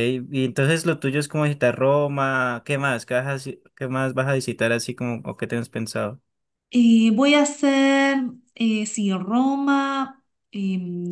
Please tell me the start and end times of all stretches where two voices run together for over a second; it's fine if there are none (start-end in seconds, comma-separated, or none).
none